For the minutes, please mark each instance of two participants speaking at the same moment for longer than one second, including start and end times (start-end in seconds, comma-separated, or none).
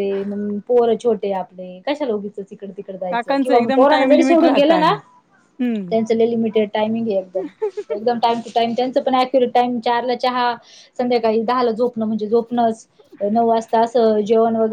3.1-5.0